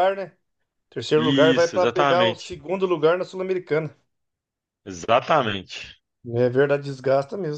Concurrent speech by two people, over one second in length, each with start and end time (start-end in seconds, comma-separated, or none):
1.1-2.6